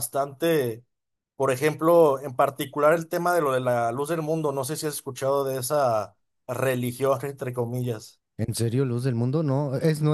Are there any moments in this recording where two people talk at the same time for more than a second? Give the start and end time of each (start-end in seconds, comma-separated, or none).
none